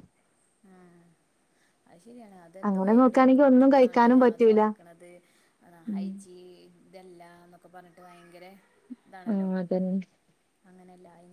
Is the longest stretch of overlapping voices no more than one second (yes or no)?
no